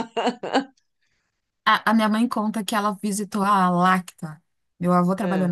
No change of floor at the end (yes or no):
yes